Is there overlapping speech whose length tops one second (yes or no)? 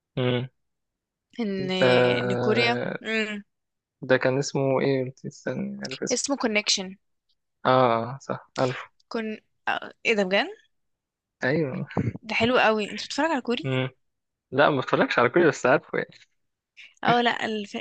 no